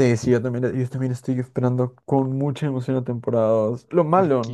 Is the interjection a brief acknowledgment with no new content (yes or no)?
yes